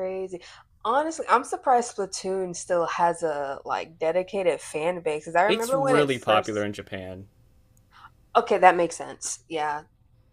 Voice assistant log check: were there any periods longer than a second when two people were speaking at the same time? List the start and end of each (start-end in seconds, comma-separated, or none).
5.5-6.7